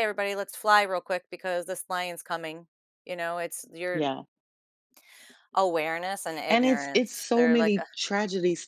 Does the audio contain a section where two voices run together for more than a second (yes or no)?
yes